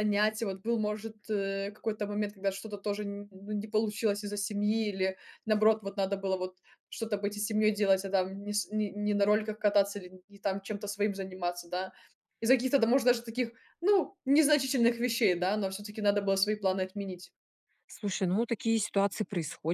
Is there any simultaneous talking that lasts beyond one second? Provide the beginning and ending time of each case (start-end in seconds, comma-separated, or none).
none